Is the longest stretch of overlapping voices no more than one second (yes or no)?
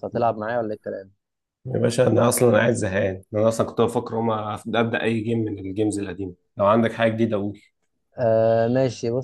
yes